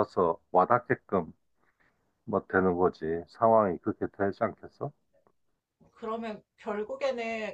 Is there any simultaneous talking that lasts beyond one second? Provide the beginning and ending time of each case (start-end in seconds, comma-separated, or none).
none